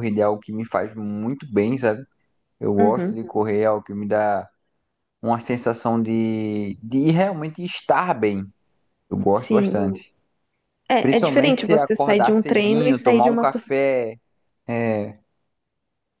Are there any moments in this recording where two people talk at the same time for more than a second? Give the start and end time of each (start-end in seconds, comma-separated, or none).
11.0-13.7